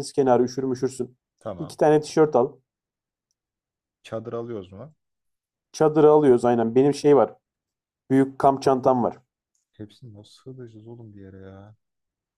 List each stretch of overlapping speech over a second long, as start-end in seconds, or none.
none